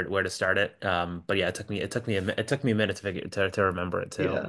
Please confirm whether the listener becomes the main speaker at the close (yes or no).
yes